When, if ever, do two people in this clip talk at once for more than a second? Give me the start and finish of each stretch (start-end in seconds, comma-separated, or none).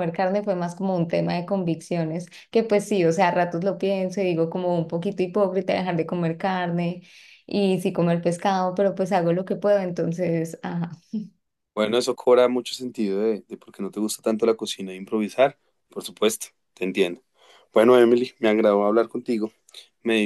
none